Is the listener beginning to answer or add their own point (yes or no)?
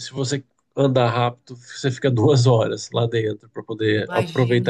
no